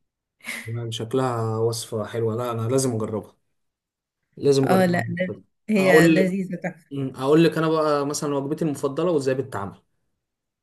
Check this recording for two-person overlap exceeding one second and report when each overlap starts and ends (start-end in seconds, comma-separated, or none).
none